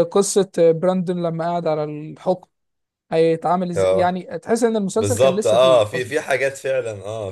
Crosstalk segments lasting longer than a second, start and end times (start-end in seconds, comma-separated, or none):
4.9-6.1